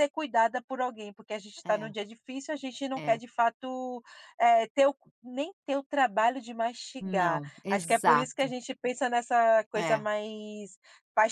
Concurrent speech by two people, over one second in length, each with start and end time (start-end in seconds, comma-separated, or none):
7.0-8.5